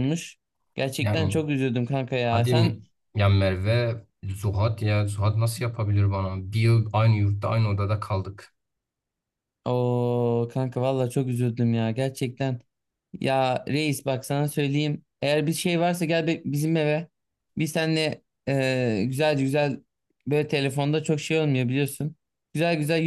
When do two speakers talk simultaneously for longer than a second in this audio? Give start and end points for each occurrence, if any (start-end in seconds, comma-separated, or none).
none